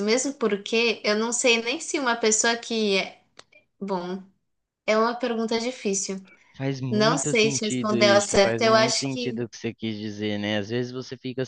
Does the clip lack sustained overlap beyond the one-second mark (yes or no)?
no